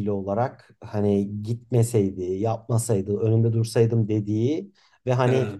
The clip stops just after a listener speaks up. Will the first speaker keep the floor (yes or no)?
yes